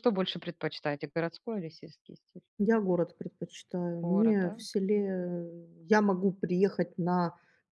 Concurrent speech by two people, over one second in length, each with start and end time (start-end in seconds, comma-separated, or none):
none